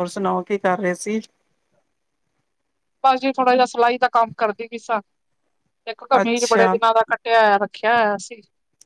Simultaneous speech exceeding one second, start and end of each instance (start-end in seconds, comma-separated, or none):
none